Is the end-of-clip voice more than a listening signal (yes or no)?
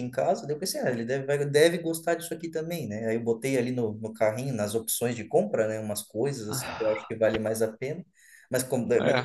no